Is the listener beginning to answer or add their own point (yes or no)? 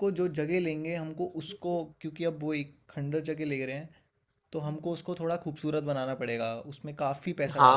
yes